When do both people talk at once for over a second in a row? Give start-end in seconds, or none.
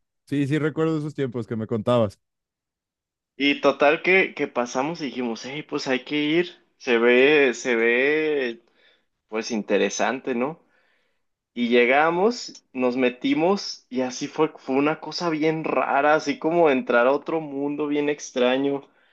none